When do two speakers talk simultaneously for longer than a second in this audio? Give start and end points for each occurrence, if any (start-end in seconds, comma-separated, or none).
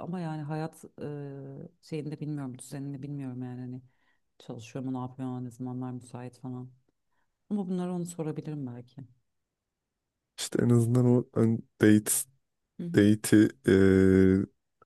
none